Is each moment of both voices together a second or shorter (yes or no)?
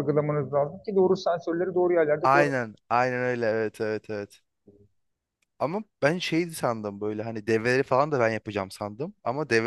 yes